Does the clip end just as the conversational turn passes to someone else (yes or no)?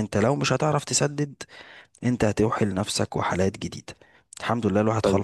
yes